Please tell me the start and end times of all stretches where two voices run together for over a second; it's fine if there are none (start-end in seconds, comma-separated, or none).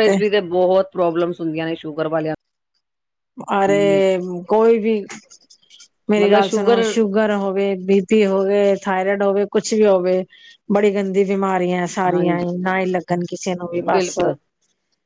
none